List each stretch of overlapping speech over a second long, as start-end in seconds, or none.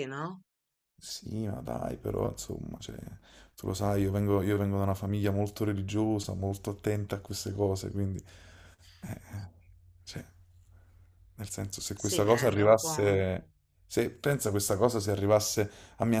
11.9-13.2